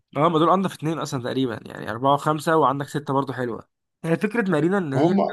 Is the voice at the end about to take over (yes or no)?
no